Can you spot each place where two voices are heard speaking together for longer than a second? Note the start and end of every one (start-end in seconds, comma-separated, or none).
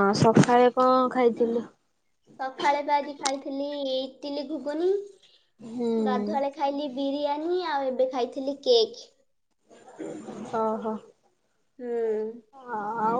none